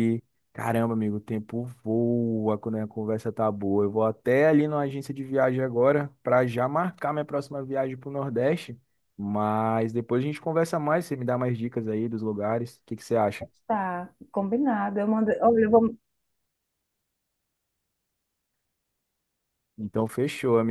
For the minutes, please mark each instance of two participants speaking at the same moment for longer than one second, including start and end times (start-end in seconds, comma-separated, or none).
none